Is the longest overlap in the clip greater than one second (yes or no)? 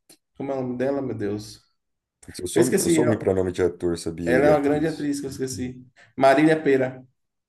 yes